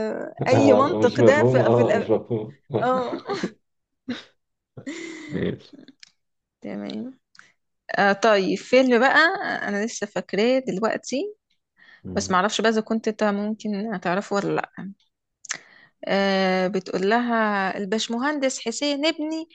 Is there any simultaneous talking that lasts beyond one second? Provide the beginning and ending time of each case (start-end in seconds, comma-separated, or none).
0.5-2.1